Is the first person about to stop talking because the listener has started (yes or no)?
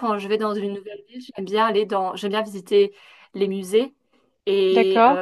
no